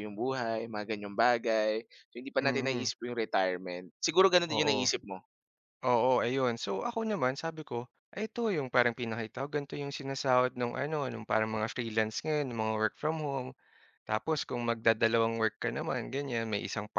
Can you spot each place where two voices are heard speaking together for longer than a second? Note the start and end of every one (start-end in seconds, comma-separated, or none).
none